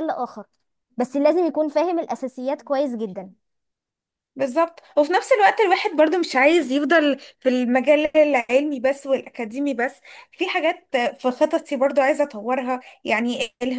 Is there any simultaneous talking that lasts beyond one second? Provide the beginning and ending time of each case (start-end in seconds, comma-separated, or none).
none